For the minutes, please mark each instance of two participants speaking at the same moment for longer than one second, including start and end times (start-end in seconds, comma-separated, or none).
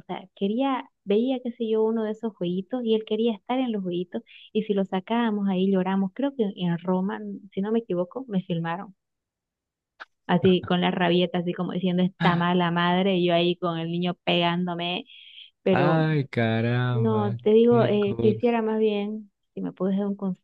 16.9-18.6